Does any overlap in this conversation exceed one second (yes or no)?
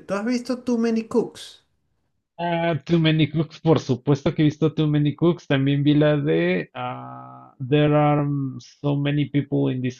no